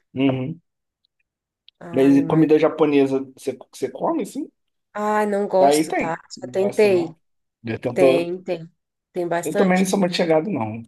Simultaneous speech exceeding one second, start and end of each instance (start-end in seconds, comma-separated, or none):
5.6-7.2